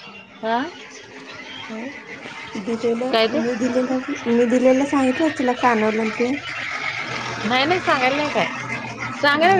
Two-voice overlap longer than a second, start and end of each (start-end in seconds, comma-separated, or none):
none